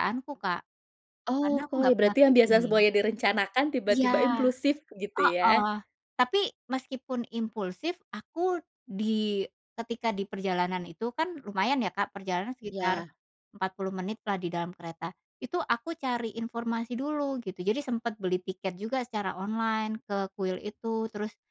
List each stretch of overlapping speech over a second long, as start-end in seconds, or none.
1.4-2.8